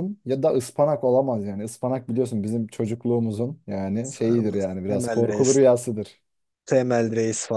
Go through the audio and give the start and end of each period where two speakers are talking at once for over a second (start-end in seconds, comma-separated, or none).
4.1-5.6